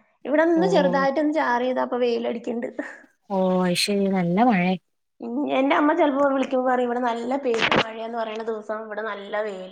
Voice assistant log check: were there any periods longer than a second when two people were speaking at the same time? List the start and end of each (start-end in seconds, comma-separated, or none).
none